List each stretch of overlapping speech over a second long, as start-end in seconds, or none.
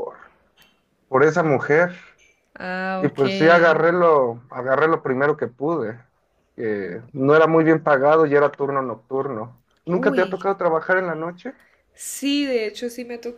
none